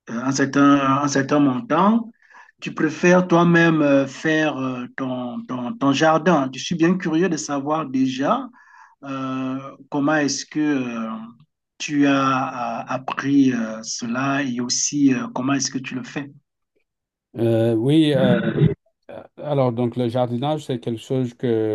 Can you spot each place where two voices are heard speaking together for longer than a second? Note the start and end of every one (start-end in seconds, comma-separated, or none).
none